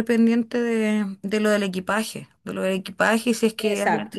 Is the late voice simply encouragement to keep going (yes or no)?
yes